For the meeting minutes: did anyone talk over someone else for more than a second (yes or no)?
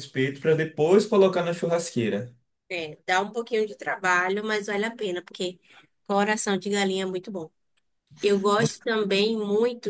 no